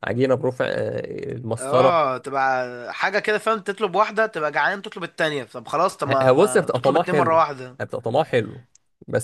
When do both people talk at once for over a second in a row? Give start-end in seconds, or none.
6.1-7.4